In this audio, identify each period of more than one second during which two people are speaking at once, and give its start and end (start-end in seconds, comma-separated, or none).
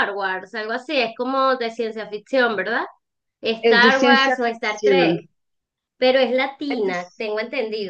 3.6-5.2